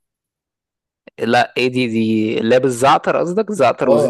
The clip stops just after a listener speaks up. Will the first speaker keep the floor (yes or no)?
no